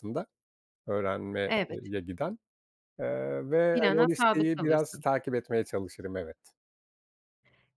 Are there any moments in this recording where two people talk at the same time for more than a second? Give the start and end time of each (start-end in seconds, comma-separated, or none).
3.7-5.0